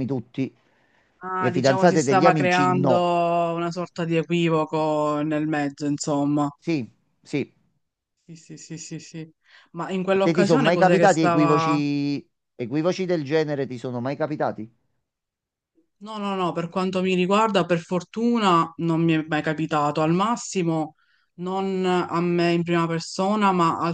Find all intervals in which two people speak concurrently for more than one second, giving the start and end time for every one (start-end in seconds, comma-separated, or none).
1.4-3.1, 10.2-11.8